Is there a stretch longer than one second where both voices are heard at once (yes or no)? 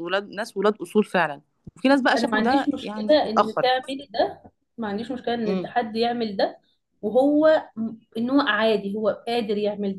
yes